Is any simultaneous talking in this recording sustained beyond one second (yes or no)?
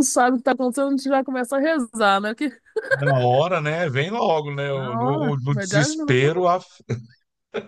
yes